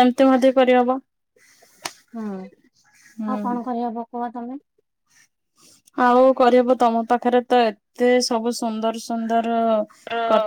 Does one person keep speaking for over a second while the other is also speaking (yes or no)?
no